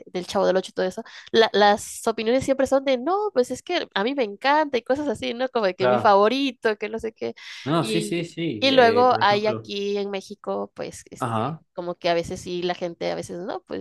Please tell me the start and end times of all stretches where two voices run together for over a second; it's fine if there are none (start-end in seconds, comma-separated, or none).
7.8-9.7